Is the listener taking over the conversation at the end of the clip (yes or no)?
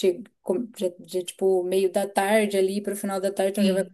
no